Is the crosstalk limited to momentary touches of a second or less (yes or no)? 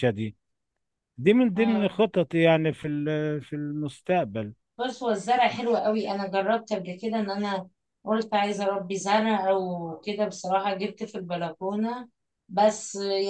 yes